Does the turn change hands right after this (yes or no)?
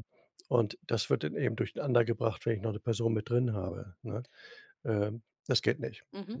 yes